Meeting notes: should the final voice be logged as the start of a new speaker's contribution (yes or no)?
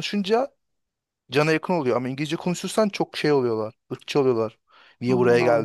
no